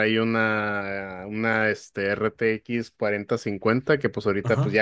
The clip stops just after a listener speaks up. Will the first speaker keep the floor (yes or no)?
yes